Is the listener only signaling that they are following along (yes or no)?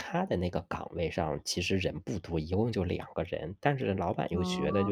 yes